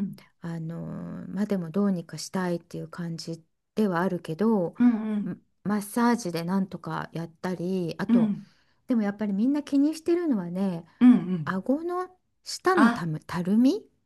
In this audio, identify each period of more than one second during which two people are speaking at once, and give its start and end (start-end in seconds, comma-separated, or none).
none